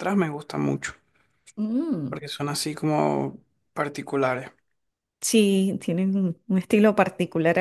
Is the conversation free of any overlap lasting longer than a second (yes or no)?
yes